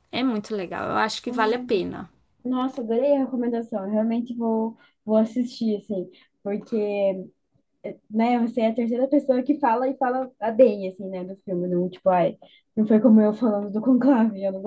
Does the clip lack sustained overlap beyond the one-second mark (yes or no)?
yes